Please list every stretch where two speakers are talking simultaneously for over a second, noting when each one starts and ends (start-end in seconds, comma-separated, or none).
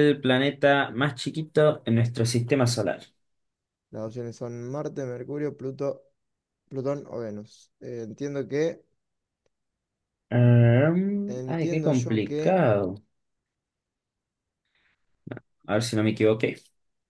11.3-12.6